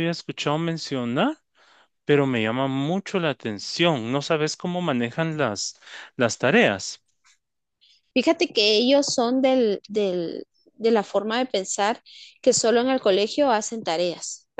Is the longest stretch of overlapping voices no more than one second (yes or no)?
yes